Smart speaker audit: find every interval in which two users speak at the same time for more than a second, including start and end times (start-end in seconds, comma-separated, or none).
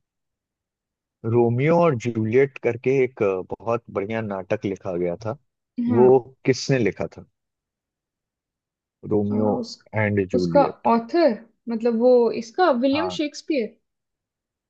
none